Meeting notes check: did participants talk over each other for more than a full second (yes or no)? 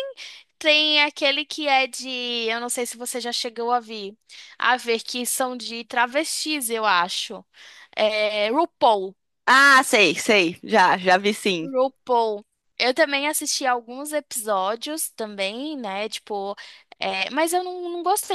no